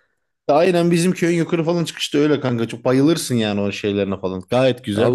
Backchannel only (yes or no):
no